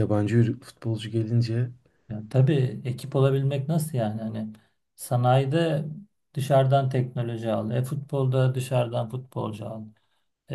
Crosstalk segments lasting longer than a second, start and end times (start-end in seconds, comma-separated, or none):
none